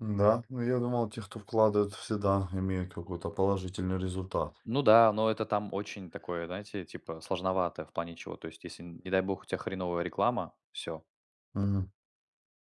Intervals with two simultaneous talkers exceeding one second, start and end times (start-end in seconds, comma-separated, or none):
none